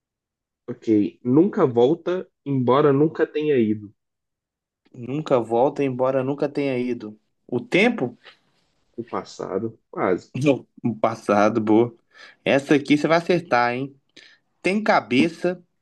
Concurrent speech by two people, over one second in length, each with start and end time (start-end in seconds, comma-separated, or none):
none